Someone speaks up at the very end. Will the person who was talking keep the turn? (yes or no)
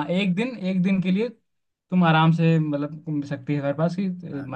no